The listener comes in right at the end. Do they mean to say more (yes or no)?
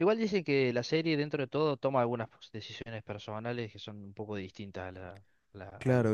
yes